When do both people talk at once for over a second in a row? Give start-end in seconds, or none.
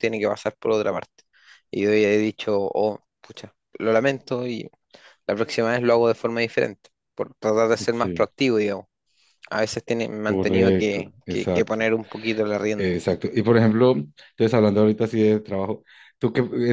10.2-11.8